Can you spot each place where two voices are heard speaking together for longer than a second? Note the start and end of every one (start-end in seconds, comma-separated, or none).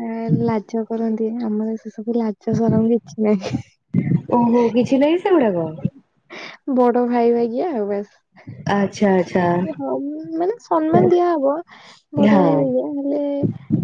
none